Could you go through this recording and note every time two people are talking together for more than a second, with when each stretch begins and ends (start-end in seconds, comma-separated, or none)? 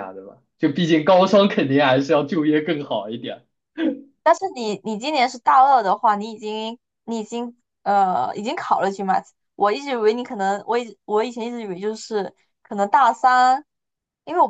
none